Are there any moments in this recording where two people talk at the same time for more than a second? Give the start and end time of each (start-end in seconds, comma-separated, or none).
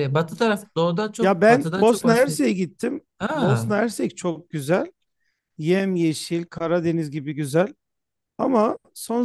1.2-2.4